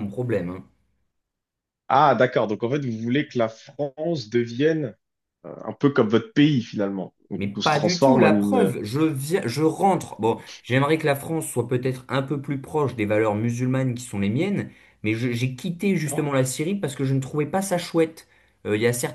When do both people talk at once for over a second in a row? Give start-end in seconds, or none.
7.4-8.8